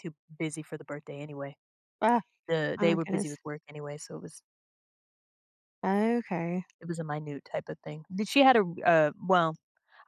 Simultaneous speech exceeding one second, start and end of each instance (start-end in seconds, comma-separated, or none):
none